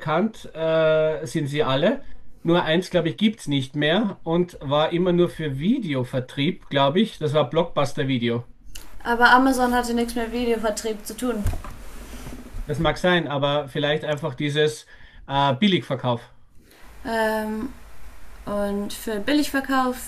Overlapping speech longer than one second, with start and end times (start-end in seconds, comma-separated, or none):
none